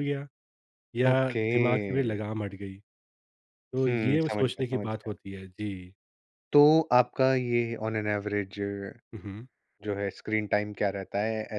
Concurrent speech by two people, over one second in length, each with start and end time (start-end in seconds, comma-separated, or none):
3.8-5.1